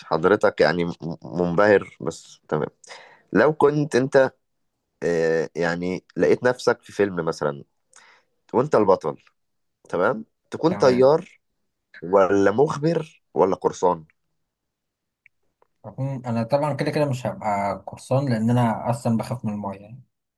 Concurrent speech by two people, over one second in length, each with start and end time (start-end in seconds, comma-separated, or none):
none